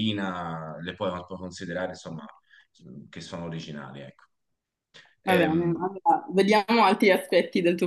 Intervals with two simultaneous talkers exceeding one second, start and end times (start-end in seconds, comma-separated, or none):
none